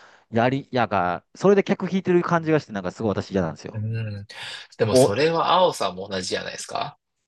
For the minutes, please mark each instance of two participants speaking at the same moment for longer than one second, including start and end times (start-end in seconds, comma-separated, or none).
none